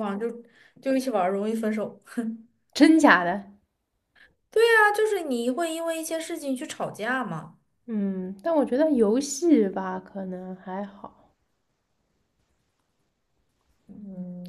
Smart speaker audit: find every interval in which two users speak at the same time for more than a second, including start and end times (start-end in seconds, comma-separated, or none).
none